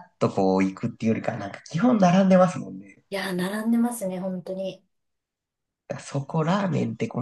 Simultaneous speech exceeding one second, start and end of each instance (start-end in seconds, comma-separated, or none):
none